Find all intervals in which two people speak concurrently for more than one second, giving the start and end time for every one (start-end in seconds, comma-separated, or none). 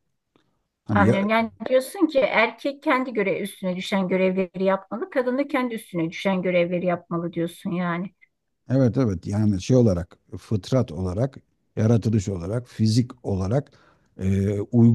none